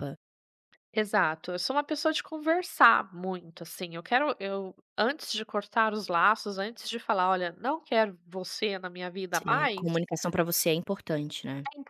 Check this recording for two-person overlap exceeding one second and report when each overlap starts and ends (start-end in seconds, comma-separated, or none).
none